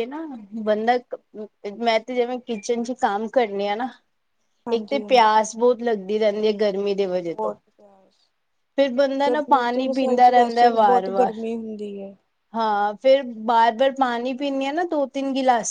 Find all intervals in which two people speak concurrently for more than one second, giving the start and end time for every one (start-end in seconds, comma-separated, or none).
9.3-11.3